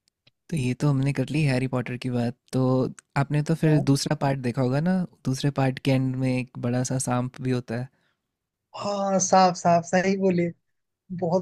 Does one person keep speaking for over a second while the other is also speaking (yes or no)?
no